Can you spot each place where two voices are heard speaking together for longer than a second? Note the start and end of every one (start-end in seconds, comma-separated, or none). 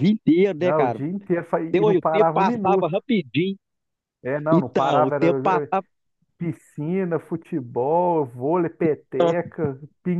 1.7-3.0, 4.5-5.7